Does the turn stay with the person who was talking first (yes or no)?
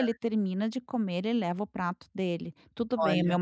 yes